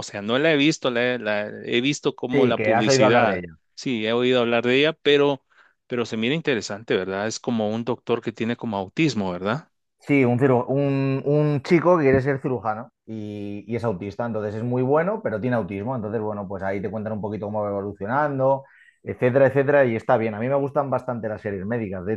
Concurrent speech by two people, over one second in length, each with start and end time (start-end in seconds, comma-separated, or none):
2.3-3.5